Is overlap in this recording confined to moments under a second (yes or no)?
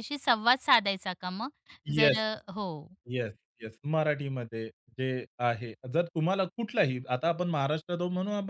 yes